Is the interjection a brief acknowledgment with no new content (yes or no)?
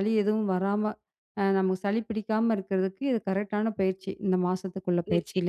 no